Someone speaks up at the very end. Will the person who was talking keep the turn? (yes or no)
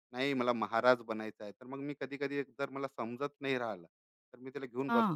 yes